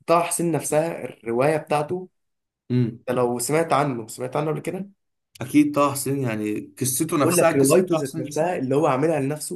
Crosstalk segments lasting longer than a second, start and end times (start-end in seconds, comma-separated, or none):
7.2-8.5